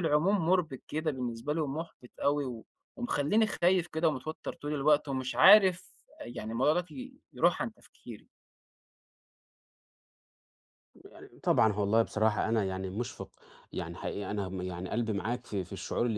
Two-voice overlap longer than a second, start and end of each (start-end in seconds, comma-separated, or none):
none